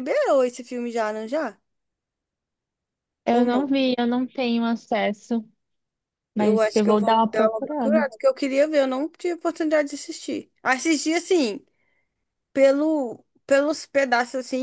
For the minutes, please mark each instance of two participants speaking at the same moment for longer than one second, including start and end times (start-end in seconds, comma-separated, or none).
6.3-8.1